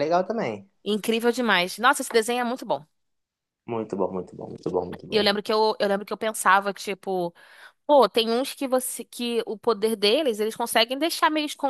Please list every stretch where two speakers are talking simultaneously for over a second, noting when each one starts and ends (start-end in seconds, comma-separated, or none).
none